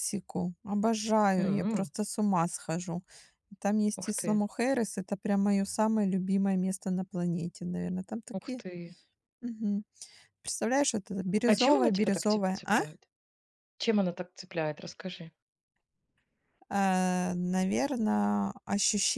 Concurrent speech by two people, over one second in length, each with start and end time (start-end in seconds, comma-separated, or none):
11.4-12.8